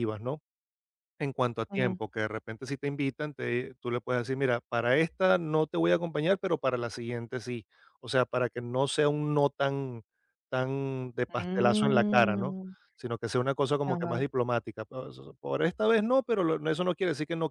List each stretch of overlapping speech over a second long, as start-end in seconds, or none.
11.3-12.6